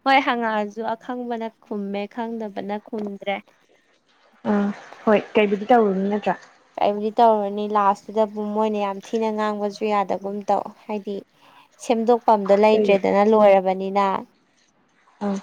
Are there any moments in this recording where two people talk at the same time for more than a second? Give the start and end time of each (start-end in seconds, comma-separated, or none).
none